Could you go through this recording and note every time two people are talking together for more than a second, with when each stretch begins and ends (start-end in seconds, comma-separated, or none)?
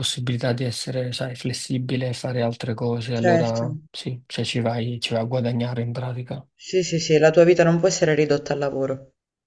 none